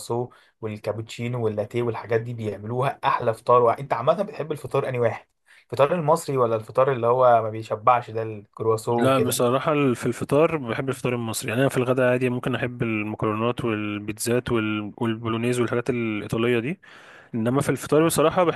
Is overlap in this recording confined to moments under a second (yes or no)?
yes